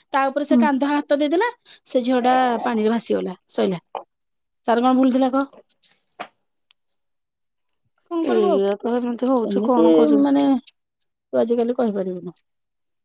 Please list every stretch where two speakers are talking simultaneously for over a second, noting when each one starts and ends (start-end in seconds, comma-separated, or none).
8.3-9.9